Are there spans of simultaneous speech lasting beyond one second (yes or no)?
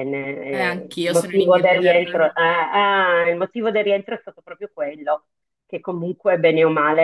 yes